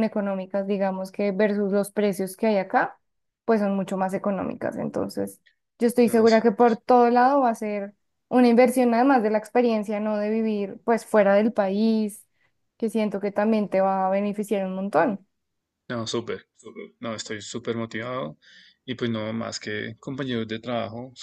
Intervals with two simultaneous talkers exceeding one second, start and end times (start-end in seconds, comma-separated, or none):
none